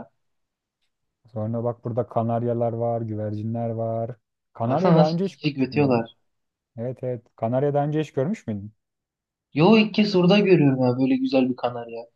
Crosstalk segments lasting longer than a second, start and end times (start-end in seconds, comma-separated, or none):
4.7-6.0